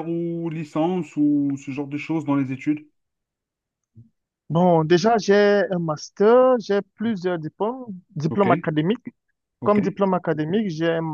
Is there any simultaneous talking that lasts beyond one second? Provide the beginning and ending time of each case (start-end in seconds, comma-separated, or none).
none